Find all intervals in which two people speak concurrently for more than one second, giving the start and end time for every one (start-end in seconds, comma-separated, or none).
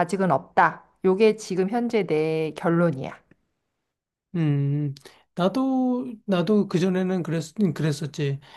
none